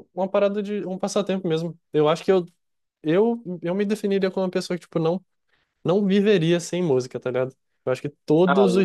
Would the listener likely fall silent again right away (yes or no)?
yes